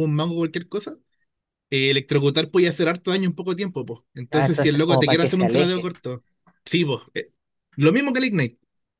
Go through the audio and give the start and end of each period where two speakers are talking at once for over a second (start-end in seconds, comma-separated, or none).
4.3-5.9